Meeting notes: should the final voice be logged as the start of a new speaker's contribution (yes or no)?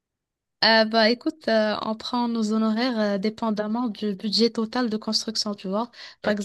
no